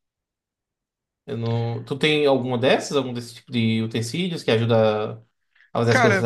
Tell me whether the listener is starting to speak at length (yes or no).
yes